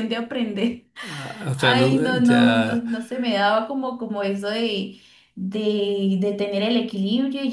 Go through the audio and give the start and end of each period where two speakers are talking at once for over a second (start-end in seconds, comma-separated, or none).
1.6-2.8